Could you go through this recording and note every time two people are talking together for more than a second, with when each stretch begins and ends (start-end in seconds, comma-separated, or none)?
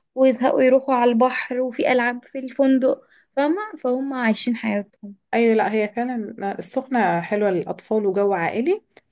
none